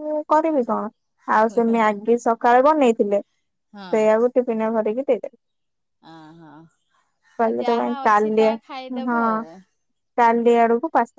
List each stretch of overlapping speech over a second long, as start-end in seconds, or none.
7.5-9.4